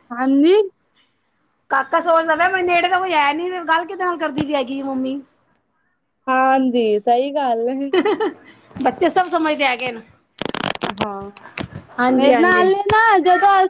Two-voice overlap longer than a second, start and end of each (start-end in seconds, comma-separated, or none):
none